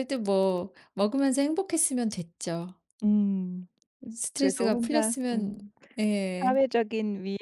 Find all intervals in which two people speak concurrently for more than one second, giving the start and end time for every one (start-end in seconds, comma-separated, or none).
4.4-5.6